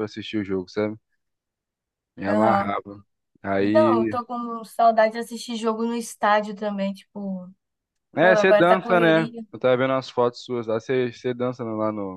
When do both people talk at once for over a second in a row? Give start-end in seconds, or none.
8.2-9.4